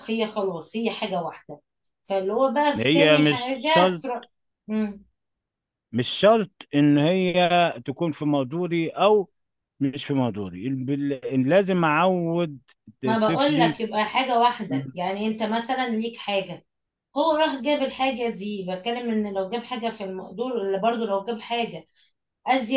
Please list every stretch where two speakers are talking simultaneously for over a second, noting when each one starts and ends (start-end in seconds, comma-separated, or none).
2.8-4.0